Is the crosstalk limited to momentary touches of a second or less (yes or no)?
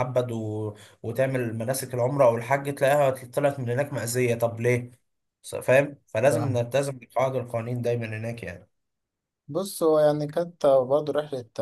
yes